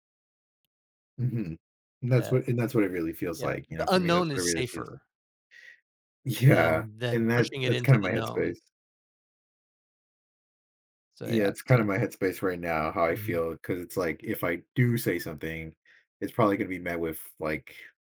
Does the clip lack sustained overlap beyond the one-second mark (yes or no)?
no